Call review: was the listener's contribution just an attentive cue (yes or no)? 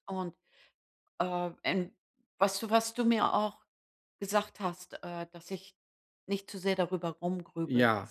no